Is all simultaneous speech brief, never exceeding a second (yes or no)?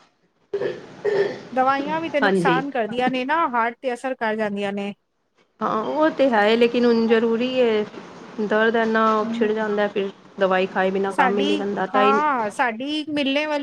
yes